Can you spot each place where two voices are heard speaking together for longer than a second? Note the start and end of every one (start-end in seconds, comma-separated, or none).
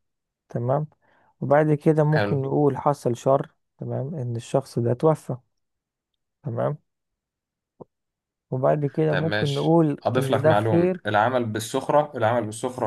9.1-11.0